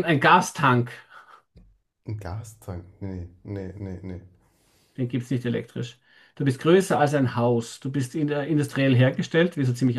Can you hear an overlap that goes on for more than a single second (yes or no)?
no